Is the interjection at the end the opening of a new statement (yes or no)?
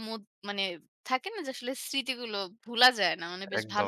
yes